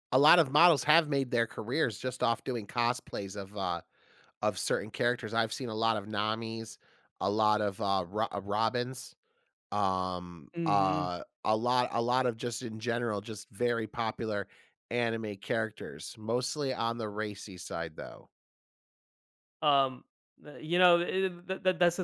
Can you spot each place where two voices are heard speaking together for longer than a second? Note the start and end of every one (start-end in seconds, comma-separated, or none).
none